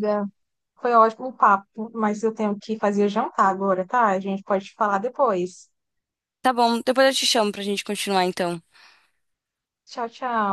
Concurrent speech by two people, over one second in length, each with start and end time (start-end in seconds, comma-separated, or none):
none